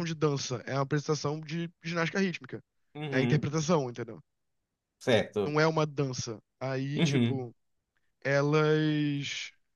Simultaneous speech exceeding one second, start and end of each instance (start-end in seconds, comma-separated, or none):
none